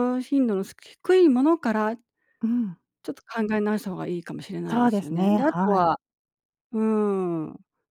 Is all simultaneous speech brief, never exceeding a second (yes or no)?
no